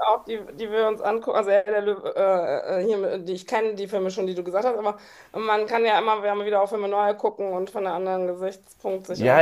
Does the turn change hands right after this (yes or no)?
yes